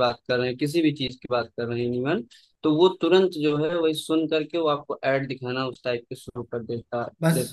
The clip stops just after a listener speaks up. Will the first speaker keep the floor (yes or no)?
no